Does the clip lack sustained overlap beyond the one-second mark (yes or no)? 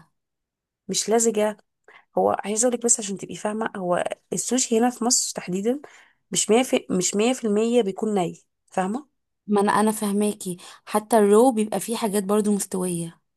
yes